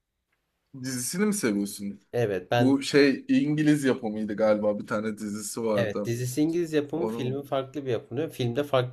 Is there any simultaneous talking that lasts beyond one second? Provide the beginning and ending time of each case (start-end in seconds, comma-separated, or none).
none